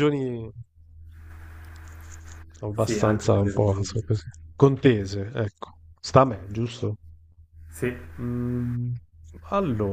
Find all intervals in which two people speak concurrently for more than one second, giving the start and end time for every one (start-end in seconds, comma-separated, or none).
2.8-4.0